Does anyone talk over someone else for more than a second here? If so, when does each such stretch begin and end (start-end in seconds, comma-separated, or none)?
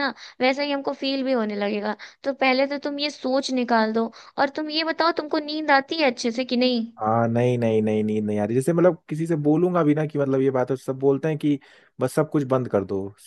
none